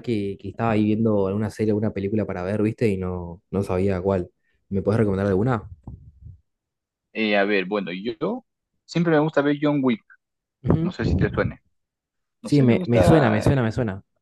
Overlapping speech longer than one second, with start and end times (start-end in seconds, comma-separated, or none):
12.4-13.7